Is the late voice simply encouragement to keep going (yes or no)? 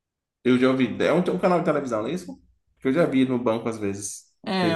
no